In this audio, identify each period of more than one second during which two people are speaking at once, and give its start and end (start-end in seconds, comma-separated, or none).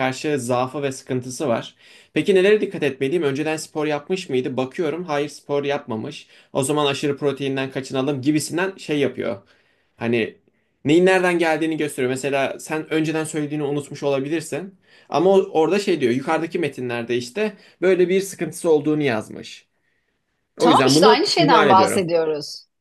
20.6-22.1